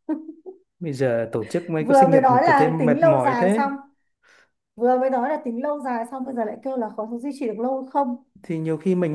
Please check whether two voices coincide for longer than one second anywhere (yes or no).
yes